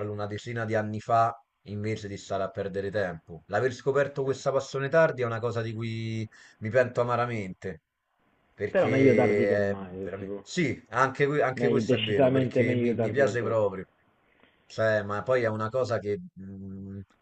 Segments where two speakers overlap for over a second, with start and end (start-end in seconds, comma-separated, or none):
8.7-10.4, 11.5-13.6